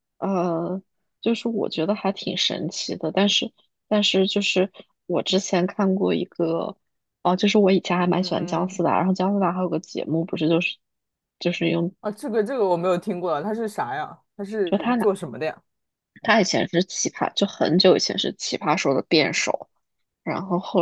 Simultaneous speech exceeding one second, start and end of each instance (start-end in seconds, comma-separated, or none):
none